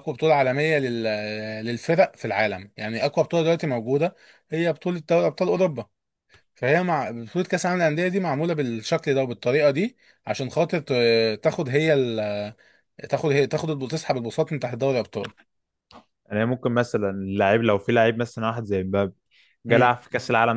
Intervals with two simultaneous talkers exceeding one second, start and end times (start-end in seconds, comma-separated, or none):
none